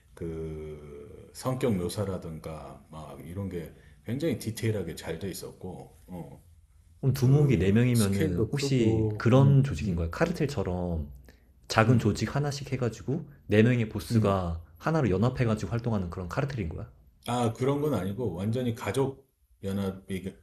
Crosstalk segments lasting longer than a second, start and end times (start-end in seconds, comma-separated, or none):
7.2-10.0